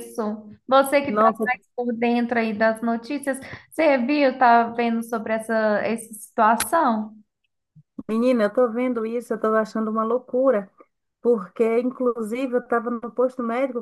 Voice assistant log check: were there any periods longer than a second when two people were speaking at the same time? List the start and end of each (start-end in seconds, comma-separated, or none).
none